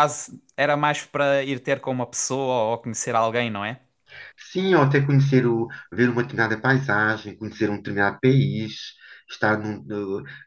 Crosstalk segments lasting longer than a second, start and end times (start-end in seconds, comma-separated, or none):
none